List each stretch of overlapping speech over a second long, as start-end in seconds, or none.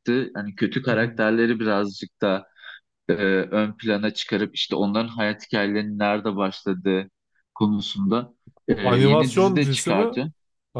8.7-10.1